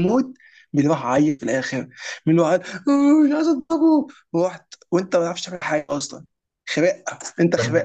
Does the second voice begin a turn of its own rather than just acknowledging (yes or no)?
yes